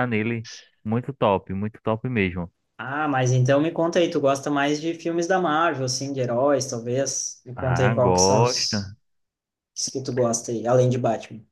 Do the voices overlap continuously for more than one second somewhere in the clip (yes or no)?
yes